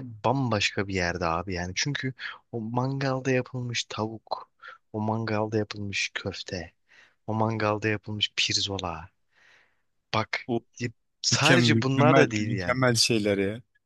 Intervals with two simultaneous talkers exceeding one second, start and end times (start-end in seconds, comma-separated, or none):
11.3-12.8